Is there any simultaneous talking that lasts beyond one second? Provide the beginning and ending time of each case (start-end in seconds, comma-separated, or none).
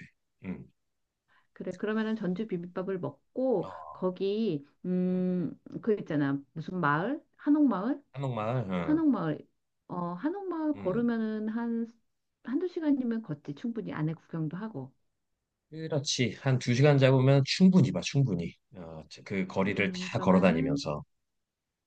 19.7-20.9